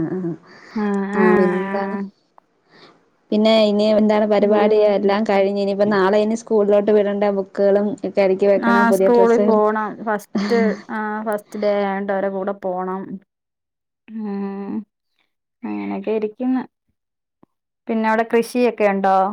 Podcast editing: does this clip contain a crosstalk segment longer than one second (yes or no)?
no